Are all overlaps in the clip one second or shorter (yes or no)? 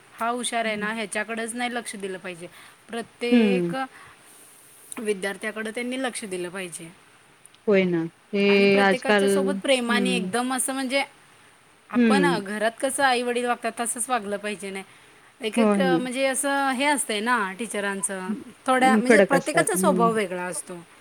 no